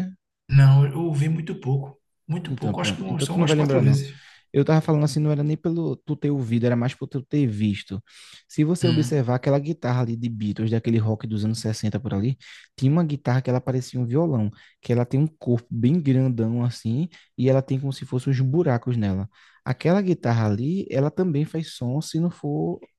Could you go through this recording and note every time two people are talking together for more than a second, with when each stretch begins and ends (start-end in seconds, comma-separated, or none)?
2.5-4.0